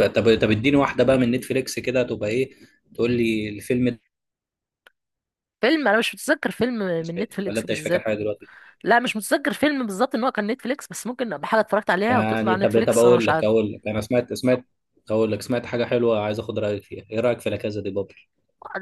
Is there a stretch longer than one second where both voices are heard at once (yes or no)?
yes